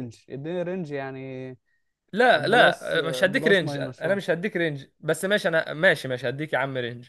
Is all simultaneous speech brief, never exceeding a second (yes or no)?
no